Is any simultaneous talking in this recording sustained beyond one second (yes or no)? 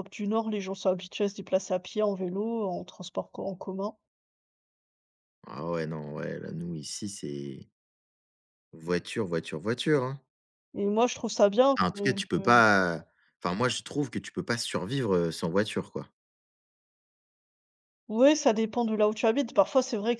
no